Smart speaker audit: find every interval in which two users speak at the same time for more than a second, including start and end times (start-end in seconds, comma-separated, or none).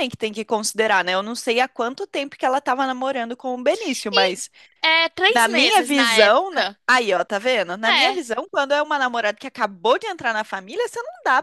5.3-6.8